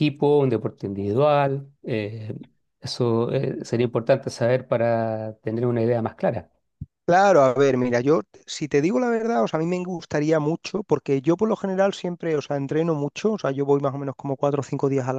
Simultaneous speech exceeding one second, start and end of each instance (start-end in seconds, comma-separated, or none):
none